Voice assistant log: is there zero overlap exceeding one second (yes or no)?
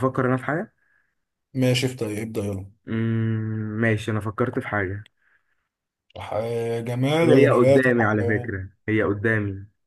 no